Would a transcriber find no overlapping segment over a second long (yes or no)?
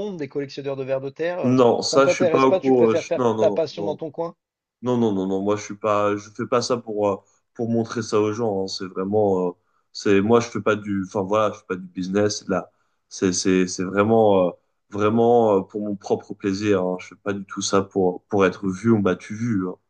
no